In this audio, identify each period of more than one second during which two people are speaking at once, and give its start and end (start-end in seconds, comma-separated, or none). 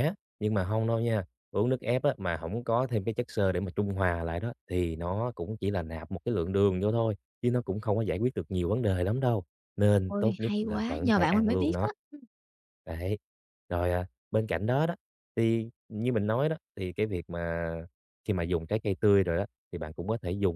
10.1-11.9